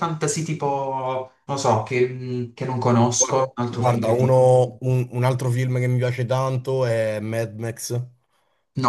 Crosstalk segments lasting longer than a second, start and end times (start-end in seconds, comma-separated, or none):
3.2-4.5